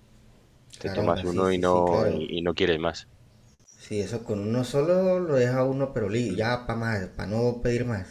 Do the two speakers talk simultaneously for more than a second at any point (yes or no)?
yes